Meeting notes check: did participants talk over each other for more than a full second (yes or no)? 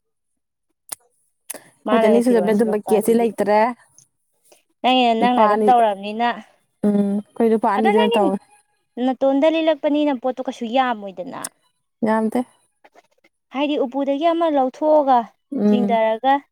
yes